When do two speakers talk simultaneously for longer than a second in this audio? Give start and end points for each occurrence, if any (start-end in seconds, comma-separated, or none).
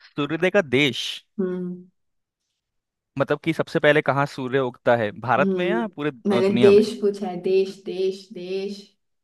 5.4-6.8